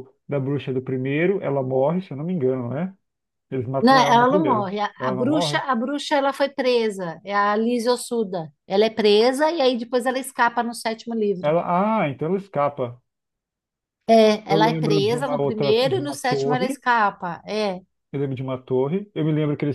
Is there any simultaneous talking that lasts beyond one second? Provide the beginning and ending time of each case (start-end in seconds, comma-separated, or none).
3.8-5.6, 14.5-16.8